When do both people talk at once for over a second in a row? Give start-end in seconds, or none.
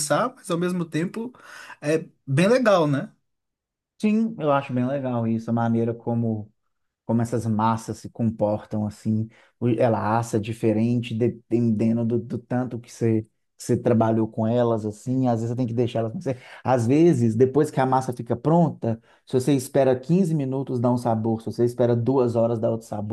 none